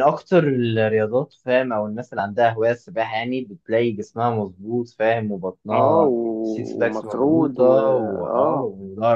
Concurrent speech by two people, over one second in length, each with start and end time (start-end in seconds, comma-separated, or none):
5.7-7.7